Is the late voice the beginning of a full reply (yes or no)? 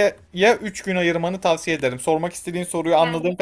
yes